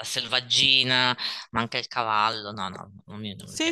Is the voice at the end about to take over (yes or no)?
yes